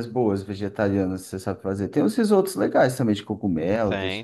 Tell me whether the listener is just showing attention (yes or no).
no